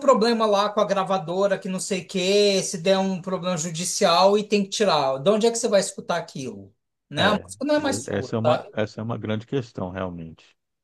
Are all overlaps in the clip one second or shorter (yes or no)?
no